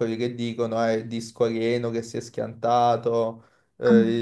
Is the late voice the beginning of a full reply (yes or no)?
no